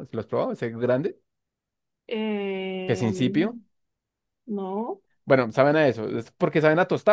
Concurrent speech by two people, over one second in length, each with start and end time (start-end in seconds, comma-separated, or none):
none